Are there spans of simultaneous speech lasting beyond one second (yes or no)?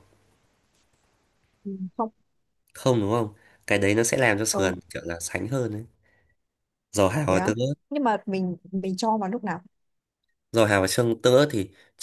no